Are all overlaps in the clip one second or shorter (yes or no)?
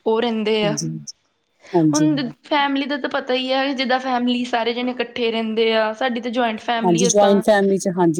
yes